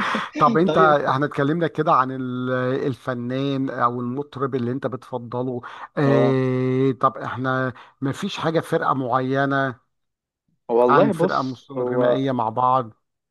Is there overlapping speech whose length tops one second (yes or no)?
yes